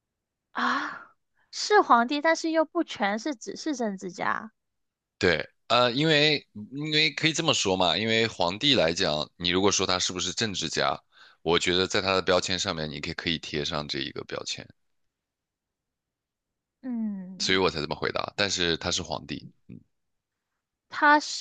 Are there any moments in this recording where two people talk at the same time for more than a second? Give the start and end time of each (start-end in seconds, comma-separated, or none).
none